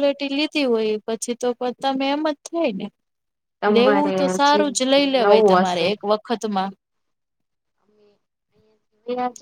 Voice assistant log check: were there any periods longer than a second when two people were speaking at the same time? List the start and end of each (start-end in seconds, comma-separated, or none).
3.8-5.9